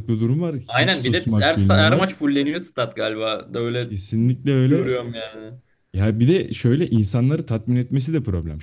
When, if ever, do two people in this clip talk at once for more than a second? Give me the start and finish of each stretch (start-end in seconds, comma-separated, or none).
0.7-2.1